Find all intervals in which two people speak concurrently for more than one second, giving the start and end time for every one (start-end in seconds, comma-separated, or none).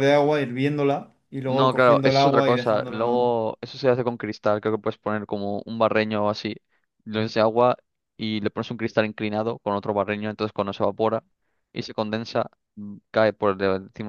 1.4-3.2